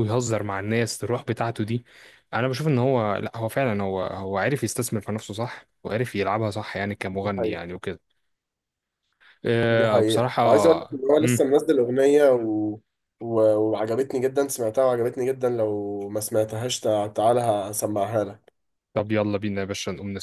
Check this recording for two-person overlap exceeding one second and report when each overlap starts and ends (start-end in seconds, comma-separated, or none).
9.7-11.5